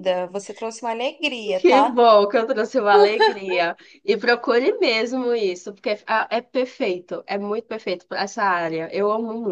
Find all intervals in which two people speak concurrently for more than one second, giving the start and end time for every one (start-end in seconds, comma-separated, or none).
none